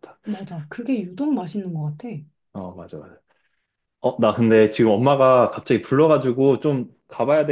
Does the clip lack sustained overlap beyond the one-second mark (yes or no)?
yes